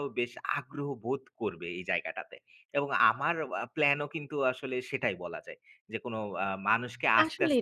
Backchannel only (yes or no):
no